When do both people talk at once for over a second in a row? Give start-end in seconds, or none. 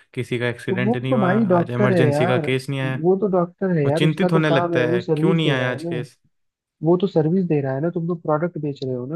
0.7-2.5, 3.8-6.0